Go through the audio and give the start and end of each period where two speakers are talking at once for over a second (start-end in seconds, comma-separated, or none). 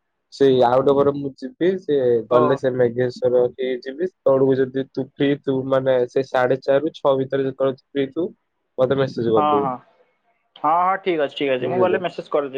none